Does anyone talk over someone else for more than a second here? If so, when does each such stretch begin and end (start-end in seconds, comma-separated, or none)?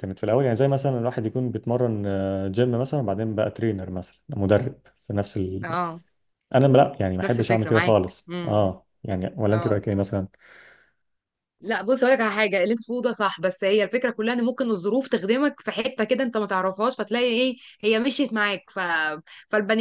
7.2-8.7